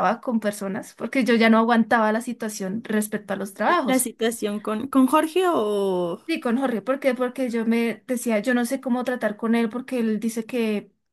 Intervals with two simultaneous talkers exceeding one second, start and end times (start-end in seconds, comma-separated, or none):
none